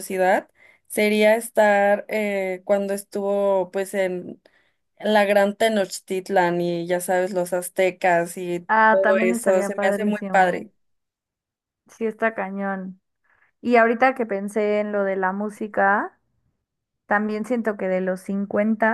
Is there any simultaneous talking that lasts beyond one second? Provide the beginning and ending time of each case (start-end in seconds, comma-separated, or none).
8.7-10.6